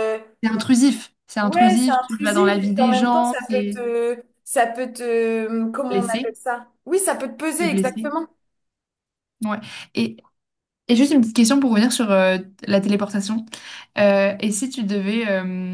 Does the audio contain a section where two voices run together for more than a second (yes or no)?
yes